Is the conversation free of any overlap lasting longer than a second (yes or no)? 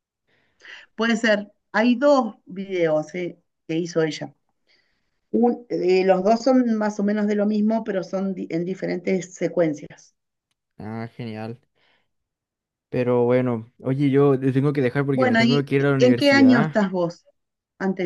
no